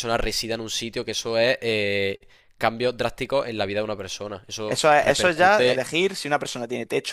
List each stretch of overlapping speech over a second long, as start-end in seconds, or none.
4.7-5.9